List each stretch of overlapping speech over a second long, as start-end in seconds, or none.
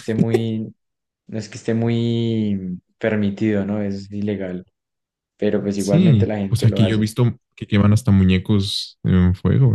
5.6-7.1